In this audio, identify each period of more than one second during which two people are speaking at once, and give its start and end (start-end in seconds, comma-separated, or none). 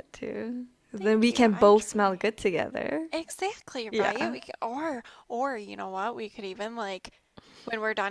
0.9-2.2